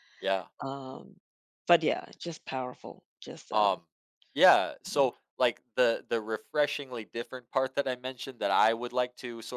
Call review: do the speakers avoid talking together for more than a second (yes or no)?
yes